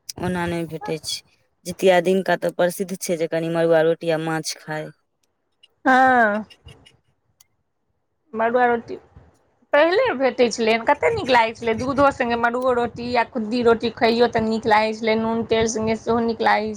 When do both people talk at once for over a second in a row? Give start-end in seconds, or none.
none